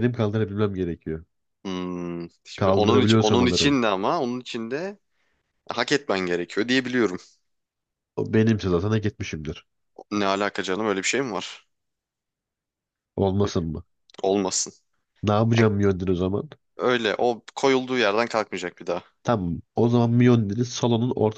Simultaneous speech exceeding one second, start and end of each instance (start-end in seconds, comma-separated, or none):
2.6-3.8